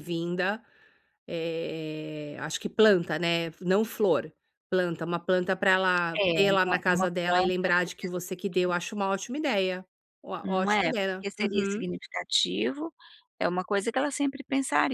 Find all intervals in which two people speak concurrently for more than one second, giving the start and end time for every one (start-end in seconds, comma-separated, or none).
6.1-8.7, 10.4-11.9